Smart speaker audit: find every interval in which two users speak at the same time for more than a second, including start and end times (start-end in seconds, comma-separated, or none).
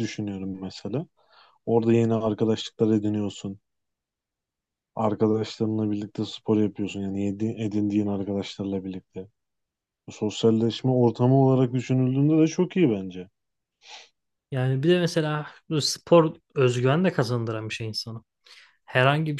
none